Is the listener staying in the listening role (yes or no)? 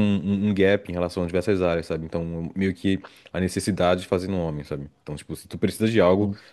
yes